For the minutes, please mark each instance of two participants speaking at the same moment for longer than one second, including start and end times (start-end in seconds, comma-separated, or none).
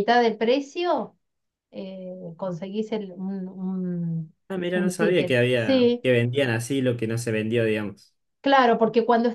4.7-6.0